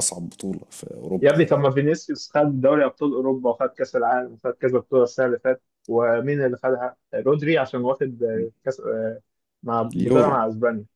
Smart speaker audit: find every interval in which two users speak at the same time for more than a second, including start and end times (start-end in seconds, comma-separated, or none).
none